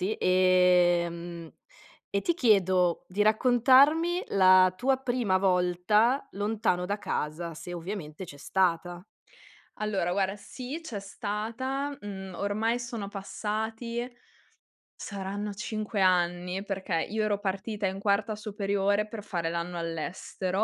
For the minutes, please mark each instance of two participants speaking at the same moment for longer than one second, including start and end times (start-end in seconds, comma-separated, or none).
none